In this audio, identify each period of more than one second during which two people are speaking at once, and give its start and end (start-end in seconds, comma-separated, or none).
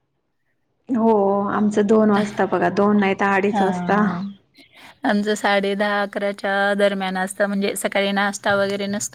none